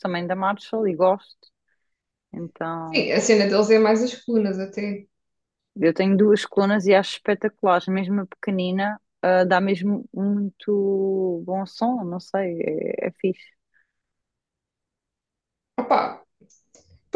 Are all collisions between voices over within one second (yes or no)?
yes